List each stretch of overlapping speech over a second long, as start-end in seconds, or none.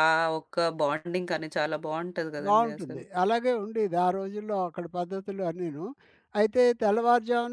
none